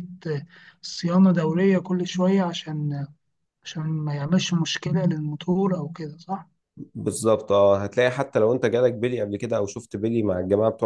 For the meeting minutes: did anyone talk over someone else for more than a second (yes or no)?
no